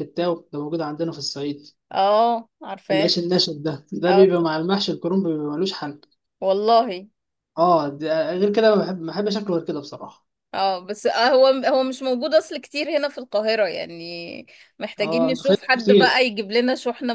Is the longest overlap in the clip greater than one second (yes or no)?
yes